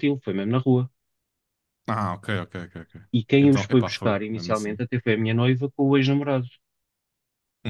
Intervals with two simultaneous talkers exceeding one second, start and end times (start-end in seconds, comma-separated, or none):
3.4-4.8